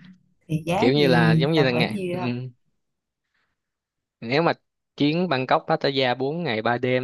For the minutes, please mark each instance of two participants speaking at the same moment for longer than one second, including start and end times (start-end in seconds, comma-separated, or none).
0.8-2.3